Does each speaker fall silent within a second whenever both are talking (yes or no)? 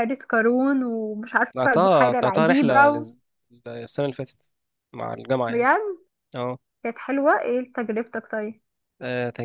no